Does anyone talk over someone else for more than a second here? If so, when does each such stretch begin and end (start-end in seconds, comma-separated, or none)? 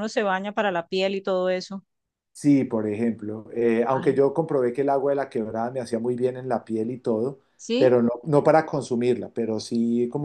none